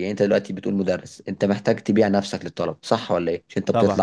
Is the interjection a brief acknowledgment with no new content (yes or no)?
yes